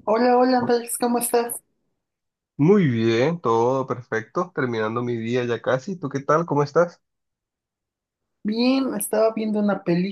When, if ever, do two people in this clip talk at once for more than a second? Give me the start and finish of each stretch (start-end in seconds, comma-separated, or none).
none